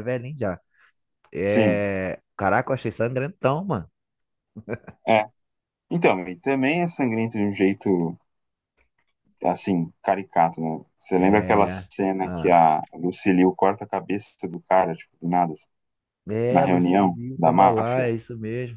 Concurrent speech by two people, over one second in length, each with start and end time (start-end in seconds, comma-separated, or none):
11.2-12.6, 16.5-18.1